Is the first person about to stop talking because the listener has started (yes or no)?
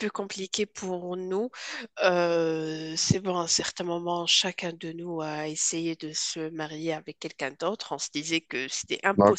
yes